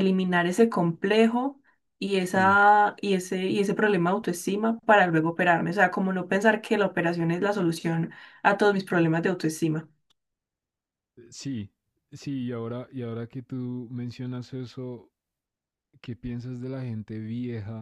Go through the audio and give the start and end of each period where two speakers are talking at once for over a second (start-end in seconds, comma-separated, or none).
none